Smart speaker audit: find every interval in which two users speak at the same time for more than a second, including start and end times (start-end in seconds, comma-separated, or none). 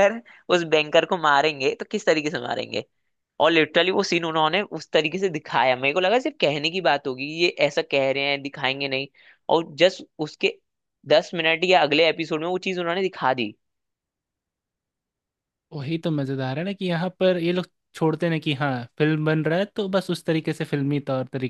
none